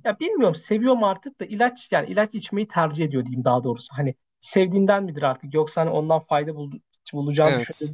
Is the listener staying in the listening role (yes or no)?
yes